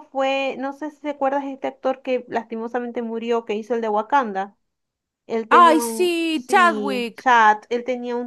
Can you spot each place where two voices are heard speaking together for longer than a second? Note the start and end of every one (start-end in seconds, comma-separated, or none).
5.5-7.2